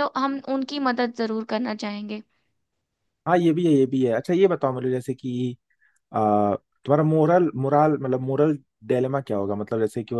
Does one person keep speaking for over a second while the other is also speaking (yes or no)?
no